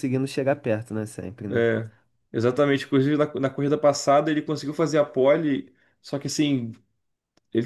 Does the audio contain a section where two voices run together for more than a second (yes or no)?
no